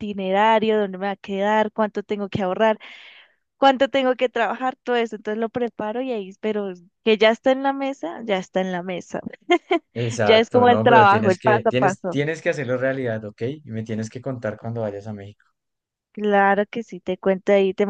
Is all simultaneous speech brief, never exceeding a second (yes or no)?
no